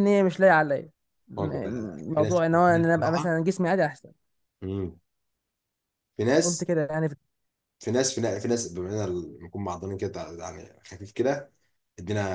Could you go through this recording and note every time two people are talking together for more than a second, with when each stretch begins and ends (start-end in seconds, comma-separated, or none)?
1.4-3.4